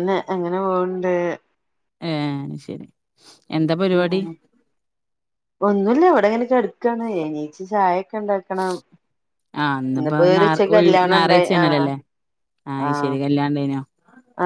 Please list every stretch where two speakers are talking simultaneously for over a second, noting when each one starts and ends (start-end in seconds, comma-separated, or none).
10.0-11.9